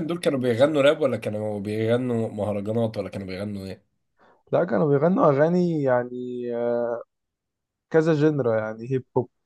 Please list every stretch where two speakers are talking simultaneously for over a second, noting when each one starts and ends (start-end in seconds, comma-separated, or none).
none